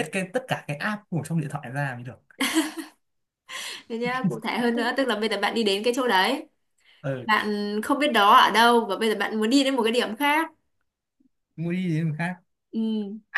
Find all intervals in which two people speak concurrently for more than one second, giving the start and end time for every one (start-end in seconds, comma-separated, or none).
none